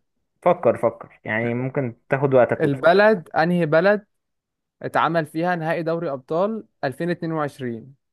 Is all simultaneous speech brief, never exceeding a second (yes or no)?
yes